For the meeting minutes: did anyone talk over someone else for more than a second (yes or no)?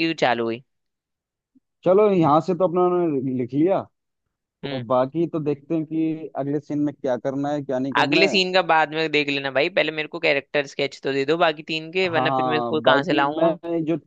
yes